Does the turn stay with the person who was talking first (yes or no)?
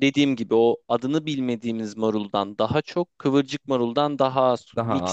yes